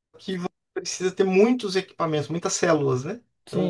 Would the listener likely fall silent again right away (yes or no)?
no